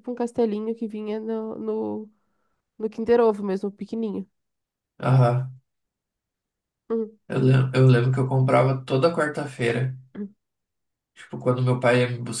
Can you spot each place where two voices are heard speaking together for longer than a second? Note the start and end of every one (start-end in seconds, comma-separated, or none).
none